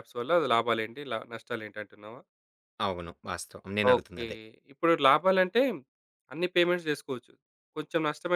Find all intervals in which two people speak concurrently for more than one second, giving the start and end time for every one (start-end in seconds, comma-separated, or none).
none